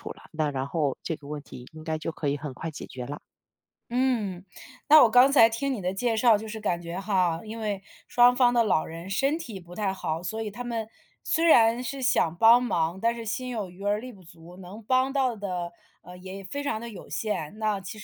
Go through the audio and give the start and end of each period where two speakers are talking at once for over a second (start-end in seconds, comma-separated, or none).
none